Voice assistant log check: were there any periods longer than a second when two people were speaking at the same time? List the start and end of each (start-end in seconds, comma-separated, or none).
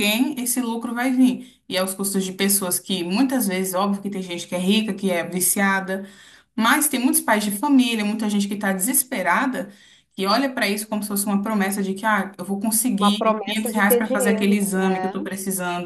13.0-15.1